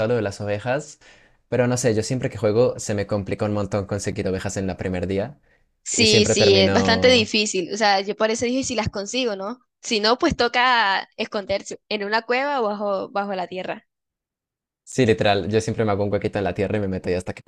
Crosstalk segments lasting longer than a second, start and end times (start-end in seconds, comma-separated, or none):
5.9-7.3